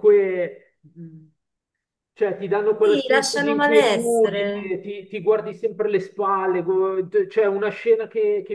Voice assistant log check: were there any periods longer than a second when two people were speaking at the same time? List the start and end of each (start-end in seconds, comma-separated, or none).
2.8-4.8